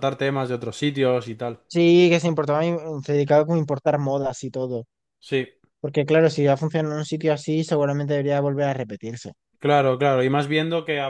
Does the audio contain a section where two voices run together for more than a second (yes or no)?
no